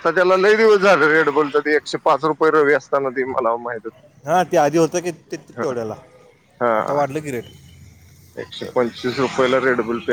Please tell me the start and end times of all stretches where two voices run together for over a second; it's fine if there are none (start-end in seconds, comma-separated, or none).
none